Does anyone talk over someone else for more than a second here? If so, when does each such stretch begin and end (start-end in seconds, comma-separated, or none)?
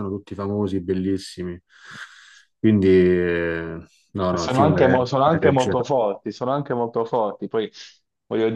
4.4-5.7